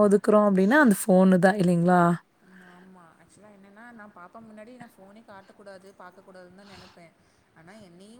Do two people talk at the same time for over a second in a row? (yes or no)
no